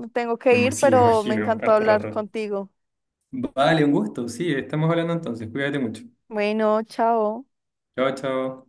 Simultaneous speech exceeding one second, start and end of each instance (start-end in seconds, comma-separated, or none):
0.5-2.2